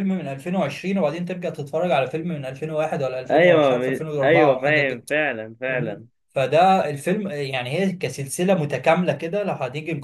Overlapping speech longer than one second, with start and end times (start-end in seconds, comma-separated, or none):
3.3-5.0